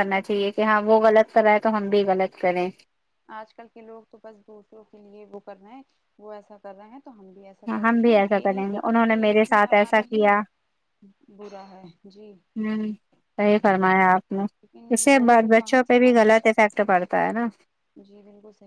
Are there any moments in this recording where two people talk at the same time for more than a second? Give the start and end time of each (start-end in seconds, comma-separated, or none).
7.9-10.3, 14.9-16.5